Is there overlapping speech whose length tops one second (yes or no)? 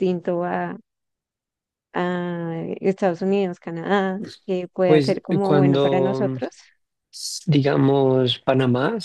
yes